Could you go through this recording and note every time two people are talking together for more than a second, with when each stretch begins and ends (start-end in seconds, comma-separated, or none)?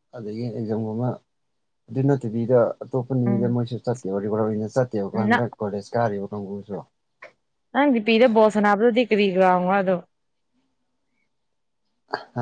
none